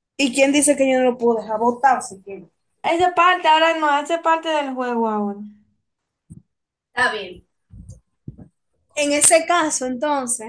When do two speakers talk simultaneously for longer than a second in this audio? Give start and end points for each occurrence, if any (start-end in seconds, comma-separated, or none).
none